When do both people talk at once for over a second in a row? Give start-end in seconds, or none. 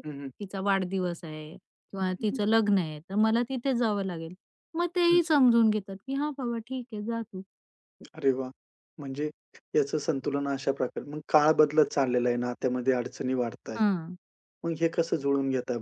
none